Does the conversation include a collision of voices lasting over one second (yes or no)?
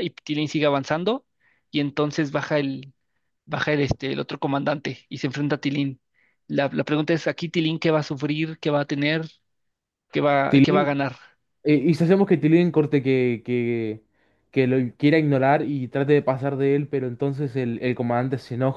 no